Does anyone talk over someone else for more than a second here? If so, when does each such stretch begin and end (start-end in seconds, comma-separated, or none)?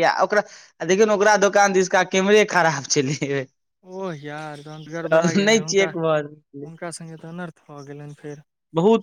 5.1-6.7